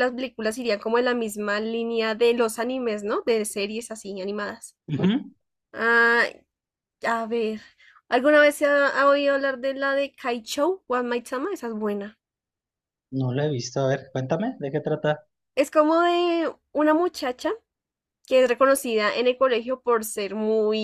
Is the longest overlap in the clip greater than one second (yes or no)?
no